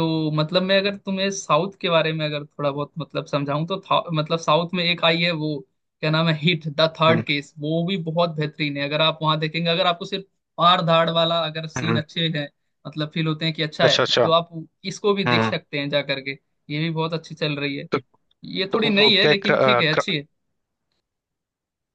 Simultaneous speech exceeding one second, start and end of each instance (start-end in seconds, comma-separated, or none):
18.8-20.1